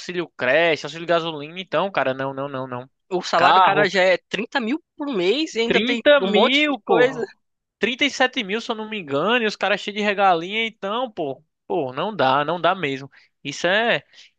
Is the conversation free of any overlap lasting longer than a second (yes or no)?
no